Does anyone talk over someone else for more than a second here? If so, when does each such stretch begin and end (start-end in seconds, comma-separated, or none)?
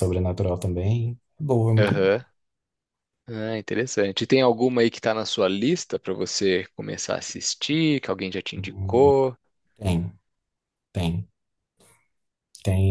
none